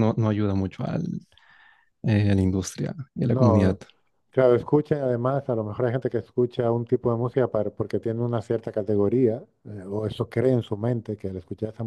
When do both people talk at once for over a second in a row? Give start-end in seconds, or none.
none